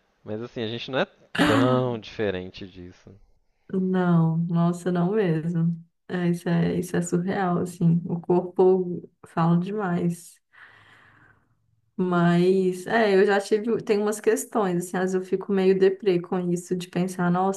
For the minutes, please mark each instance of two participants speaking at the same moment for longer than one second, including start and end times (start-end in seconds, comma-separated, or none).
none